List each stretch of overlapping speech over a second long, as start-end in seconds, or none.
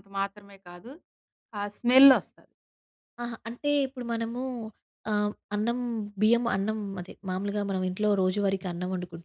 none